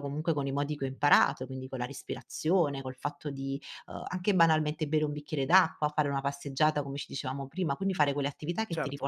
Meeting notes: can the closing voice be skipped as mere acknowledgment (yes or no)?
yes